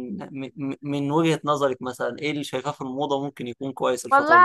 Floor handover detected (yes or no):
yes